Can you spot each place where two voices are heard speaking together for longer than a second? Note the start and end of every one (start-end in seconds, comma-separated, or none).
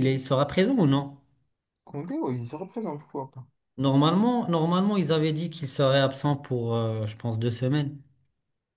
none